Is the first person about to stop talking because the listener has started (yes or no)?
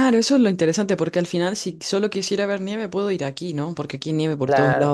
no